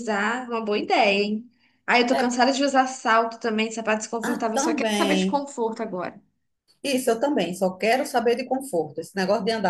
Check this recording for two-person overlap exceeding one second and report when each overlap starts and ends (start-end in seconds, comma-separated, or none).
4.2-5.4